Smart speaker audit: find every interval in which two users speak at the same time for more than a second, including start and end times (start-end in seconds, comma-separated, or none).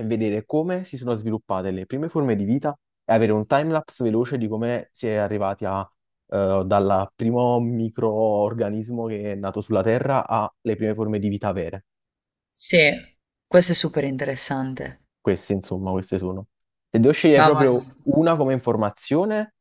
none